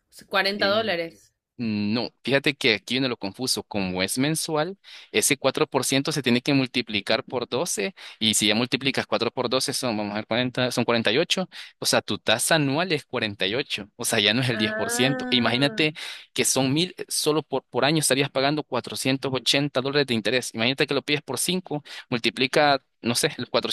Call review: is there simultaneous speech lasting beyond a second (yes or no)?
yes